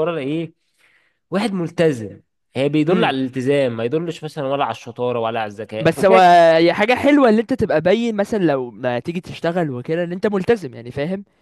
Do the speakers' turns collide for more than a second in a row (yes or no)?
no